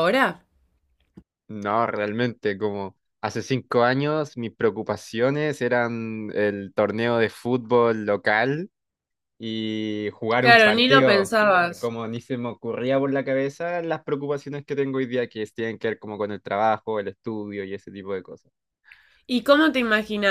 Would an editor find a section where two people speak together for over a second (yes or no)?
yes